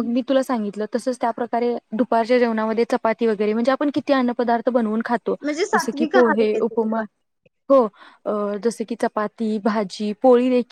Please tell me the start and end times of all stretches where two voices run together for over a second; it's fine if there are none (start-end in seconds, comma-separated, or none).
5.7-7.0